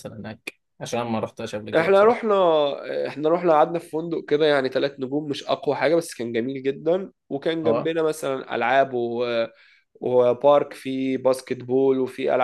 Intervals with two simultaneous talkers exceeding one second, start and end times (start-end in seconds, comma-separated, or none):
none